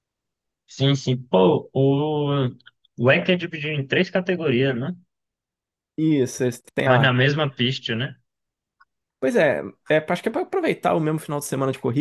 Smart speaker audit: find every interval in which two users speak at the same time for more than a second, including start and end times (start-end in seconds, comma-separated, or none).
none